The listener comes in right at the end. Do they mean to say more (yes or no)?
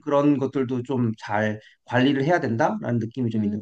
yes